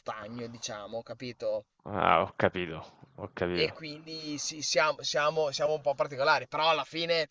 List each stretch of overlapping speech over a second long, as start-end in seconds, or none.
none